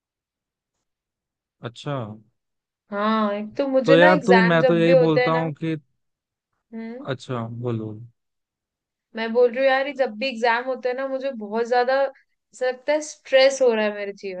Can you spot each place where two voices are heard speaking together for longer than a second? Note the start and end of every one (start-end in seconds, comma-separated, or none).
3.9-5.4